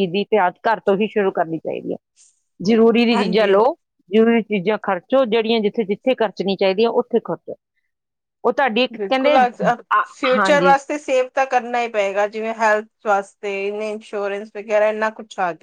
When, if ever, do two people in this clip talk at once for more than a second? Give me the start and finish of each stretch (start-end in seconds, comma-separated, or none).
none